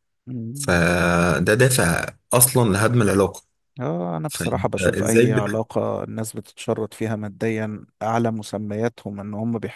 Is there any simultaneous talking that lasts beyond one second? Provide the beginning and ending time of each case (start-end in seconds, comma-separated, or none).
4.3-5.6